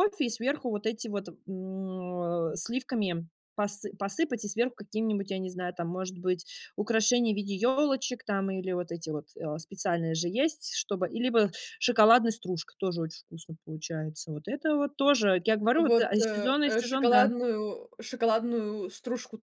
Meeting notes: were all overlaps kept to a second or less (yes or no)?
no